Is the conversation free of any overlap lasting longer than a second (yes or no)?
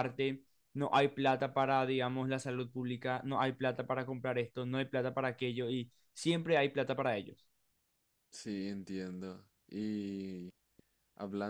yes